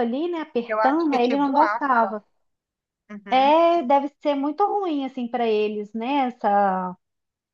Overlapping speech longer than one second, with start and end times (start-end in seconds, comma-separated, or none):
0.7-2.1